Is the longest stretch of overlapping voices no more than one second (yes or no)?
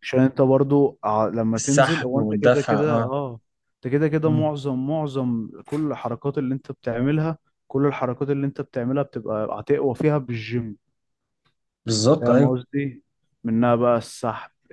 no